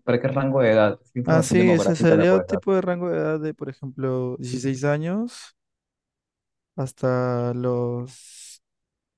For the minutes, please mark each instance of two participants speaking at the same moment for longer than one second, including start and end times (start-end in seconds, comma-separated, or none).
1.2-2.6